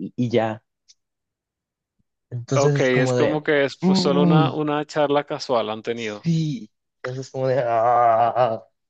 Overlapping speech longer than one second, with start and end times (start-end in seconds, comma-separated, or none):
2.5-4.5